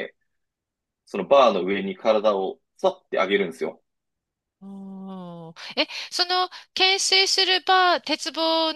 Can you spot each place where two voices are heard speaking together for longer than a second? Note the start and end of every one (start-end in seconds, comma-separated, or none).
none